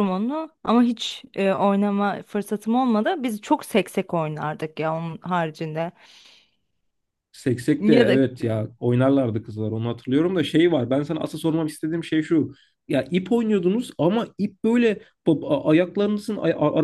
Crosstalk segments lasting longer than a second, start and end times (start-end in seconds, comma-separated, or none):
none